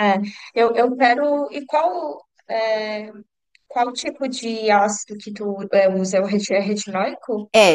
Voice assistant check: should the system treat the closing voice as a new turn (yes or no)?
yes